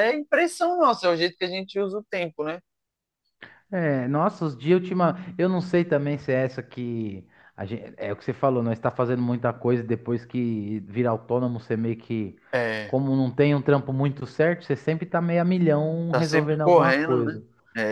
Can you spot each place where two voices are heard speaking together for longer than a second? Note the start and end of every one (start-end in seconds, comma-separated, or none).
16.1-17.4